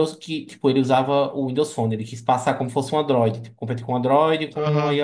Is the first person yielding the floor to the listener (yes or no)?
yes